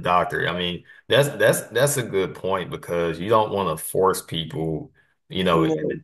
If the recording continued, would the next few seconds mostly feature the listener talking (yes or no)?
no